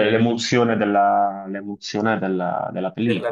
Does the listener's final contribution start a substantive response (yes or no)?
yes